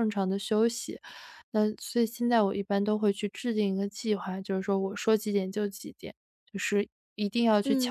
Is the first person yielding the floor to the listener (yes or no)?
yes